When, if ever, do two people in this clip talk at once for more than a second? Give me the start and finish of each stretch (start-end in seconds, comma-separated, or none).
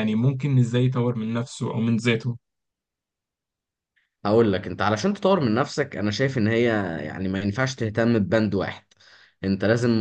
none